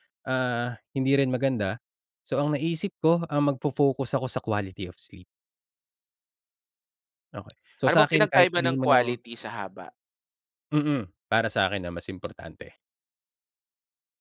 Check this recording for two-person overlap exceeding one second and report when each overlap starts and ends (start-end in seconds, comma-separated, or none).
7.8-9.2